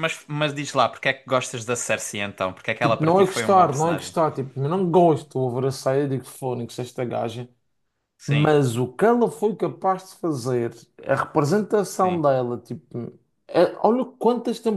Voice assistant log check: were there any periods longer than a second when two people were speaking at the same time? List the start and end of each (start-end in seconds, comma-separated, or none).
2.8-4.2